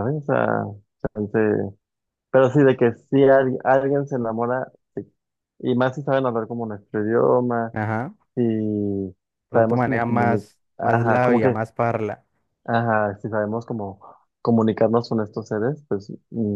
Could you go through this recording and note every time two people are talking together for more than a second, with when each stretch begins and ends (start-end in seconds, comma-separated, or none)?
9.5-11.6